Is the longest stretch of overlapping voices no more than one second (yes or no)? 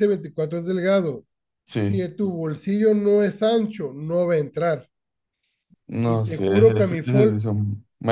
no